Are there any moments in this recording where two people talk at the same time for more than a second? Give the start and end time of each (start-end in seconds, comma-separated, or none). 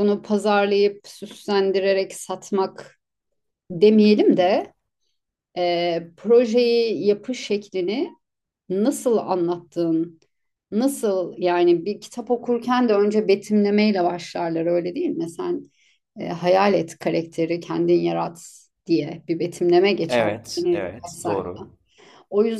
20.1-21.5